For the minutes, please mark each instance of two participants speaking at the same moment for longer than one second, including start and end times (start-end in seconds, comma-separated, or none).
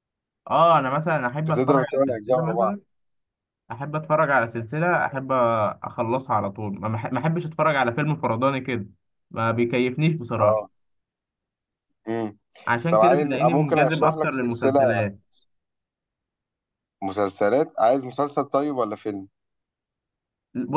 1.4-2.8, 12.9-14.8